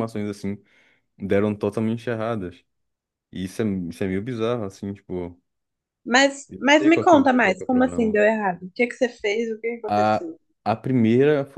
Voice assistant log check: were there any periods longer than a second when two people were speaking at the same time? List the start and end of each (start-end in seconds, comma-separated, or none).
6.5-8.2